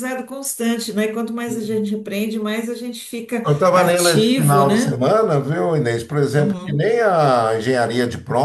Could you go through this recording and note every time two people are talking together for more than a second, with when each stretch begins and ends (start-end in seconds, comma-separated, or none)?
3.5-5.0